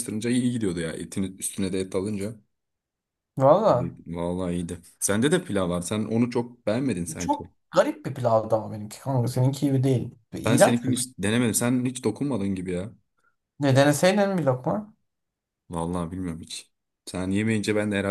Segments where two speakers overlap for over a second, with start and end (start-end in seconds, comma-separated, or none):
none